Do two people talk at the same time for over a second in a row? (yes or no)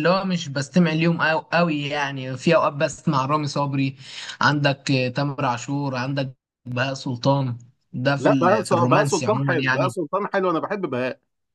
yes